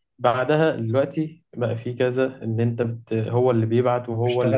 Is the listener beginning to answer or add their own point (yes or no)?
no